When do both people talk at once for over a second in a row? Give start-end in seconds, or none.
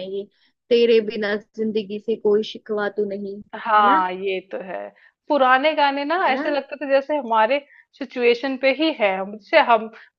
none